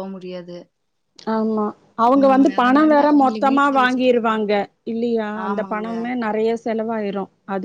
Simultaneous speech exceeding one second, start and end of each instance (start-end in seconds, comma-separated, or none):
2.2-4.5